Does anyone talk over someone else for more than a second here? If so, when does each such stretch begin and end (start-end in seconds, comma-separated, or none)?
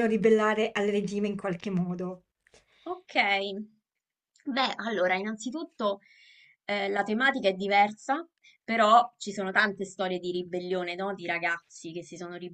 none